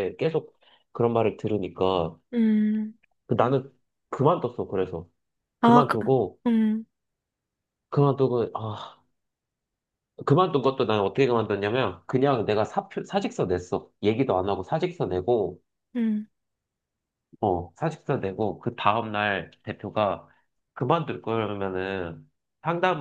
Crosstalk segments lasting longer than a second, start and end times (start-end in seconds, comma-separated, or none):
none